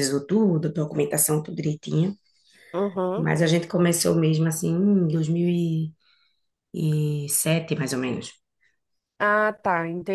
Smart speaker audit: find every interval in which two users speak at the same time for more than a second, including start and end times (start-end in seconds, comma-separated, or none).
none